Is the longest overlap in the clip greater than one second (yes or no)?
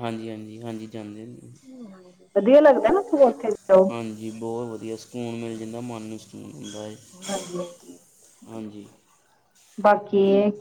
no